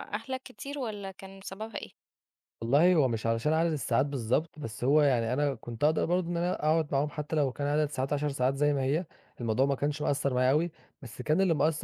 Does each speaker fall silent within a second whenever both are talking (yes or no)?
yes